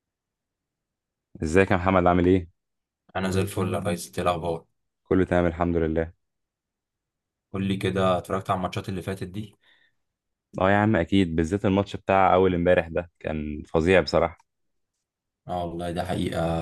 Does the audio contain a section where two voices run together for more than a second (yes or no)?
no